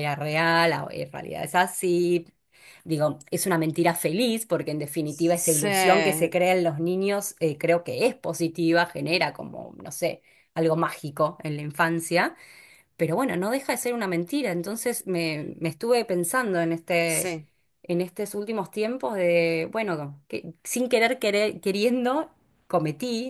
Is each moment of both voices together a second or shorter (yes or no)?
no